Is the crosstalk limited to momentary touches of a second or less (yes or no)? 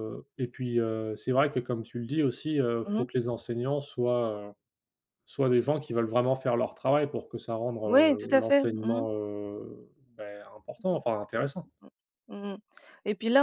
no